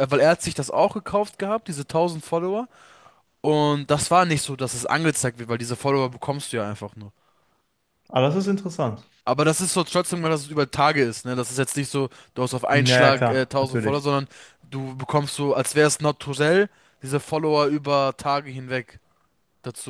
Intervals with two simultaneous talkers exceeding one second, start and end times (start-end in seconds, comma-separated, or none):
12.7-14.0